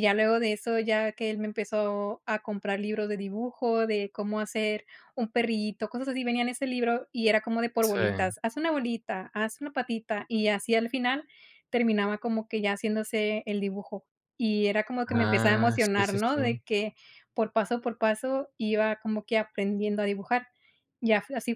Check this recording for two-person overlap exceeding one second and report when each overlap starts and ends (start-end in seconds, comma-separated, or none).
15.1-16.4